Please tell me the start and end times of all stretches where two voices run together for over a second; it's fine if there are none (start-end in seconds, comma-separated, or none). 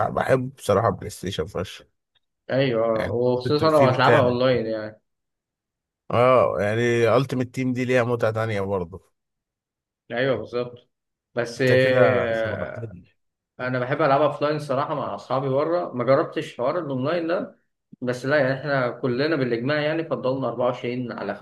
3.0-4.4